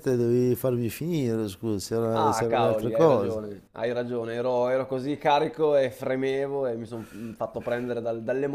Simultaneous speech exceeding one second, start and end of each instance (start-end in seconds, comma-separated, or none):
2.2-3.4